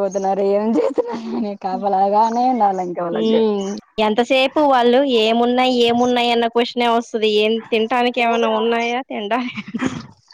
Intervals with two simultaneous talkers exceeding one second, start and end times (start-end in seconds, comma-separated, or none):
none